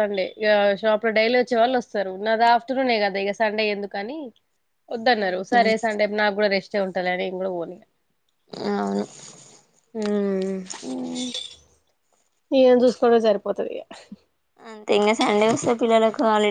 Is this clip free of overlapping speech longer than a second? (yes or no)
yes